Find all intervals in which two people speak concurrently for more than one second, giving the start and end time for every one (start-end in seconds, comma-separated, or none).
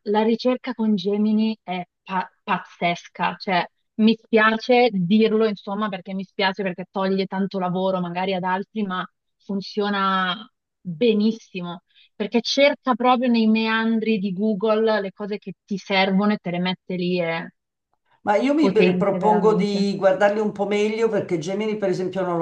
18.6-19.9